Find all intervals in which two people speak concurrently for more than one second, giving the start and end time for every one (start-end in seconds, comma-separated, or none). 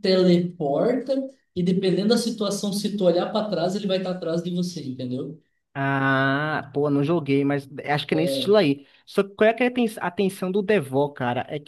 none